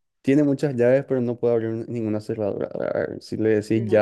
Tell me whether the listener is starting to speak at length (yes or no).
no